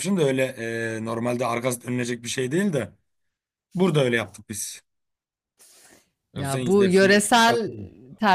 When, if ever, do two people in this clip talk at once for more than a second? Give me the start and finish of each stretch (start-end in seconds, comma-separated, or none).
6.3-7.7